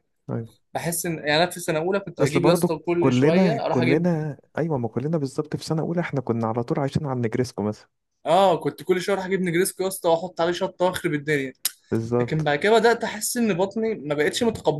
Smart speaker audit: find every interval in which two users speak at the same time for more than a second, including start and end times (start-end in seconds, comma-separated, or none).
2.2-4.1